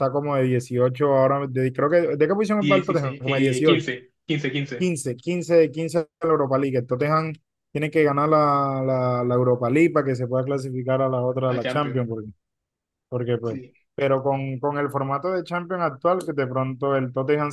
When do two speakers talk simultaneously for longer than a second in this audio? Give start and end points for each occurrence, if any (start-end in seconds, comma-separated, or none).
2.6-3.9